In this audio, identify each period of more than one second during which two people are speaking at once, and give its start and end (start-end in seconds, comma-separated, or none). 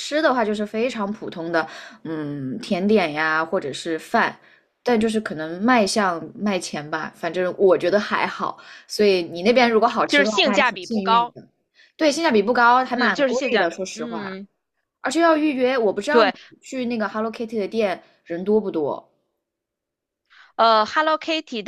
10.1-11.3, 12.9-14.4